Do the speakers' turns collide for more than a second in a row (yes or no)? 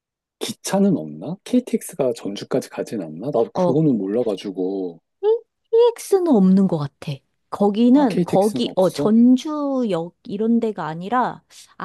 yes